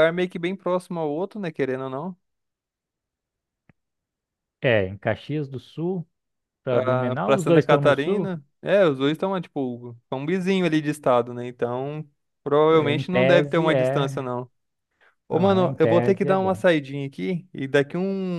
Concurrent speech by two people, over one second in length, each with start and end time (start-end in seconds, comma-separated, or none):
6.7-8.3, 12.7-14.3, 15.3-16.6